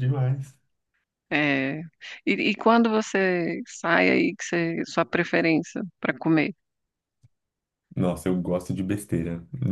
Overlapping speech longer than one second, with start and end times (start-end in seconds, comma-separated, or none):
none